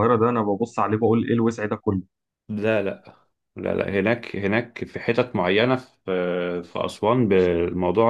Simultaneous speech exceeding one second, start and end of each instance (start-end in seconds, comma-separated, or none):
none